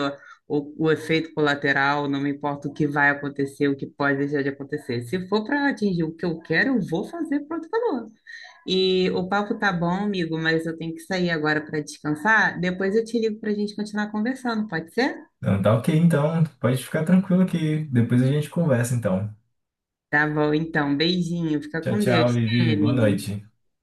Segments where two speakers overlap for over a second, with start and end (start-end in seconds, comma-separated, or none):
21.8-23.3